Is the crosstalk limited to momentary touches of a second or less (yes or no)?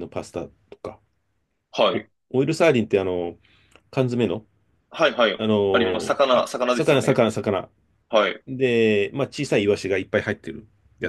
no